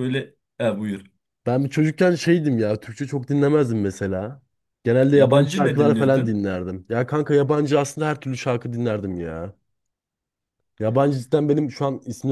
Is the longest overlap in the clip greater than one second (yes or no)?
yes